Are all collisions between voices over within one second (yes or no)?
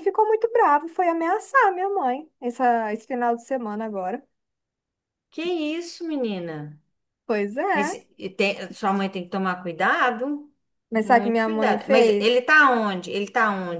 no